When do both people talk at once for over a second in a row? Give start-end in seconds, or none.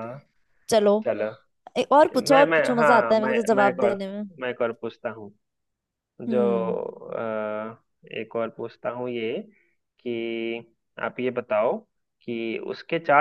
2.3-4.2